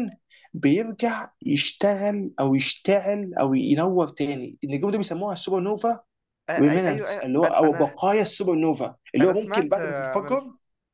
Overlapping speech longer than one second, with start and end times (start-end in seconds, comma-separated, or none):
6.6-8.0, 9.2-10.4